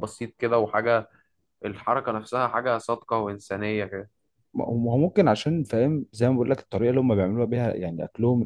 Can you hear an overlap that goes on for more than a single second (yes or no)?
no